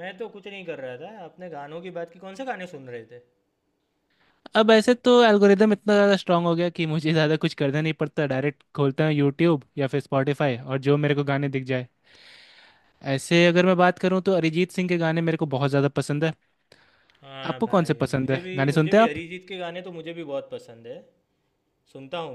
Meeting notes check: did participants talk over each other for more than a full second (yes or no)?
yes